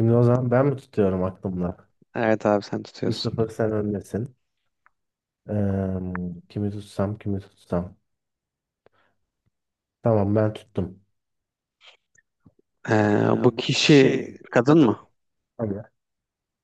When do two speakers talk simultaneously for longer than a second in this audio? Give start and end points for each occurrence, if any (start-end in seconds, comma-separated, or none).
13.3-15.0